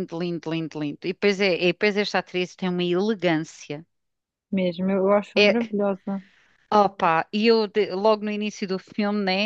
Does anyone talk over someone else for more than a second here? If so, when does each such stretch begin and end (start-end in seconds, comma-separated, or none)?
none